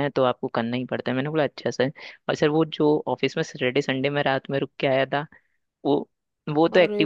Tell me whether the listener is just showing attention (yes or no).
yes